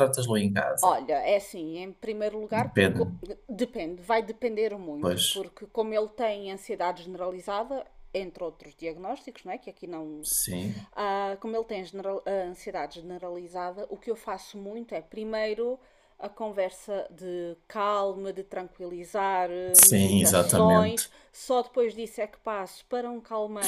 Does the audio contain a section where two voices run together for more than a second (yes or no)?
yes